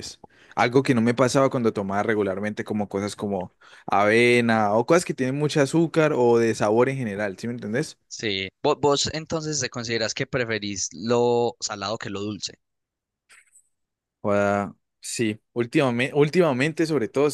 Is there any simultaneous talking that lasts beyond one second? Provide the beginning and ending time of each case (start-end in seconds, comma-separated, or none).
none